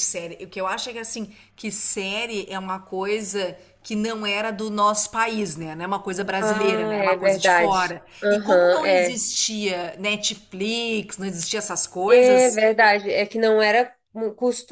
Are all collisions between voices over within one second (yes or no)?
no